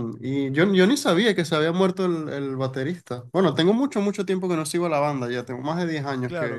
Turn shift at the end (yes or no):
yes